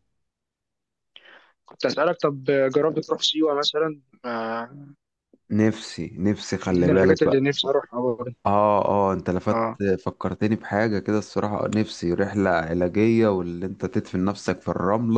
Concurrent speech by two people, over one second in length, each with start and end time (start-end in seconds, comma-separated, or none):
none